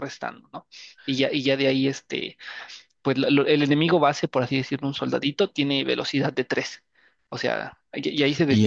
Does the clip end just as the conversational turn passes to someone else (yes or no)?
yes